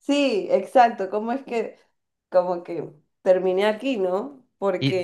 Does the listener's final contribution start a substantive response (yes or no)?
yes